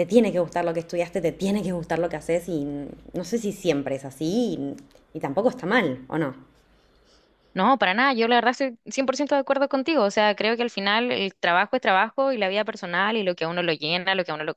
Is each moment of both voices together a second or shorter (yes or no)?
yes